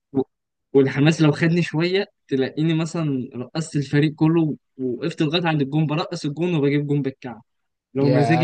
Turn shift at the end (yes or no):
yes